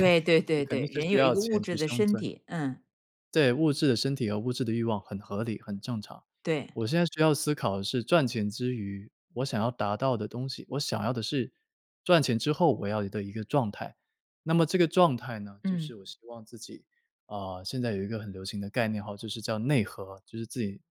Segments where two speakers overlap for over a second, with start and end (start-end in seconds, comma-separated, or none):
0.5-2.3